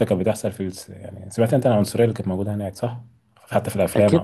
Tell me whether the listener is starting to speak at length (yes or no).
yes